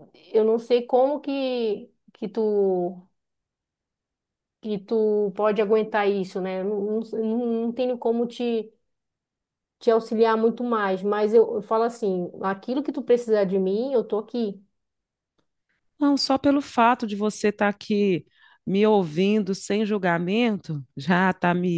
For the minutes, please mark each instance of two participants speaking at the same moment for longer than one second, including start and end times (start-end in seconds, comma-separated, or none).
none